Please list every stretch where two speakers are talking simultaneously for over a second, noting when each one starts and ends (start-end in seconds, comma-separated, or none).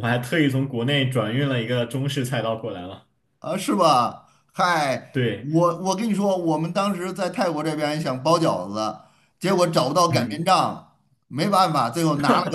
none